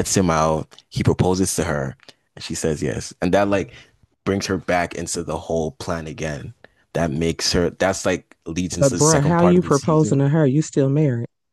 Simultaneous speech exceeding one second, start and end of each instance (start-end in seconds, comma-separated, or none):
8.8-10.3